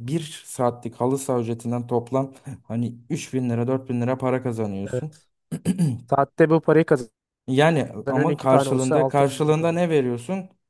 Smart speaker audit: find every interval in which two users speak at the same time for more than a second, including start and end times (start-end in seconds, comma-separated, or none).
8.3-9.8